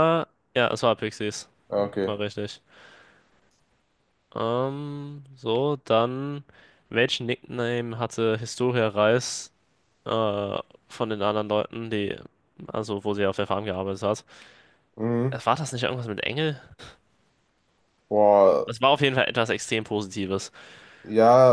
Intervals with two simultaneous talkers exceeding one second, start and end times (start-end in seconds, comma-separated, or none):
none